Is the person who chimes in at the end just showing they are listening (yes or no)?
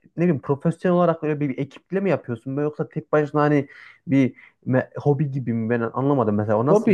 no